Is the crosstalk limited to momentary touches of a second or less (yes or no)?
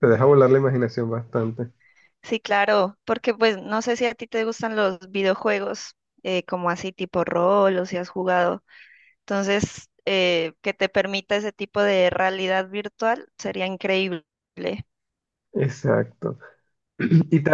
yes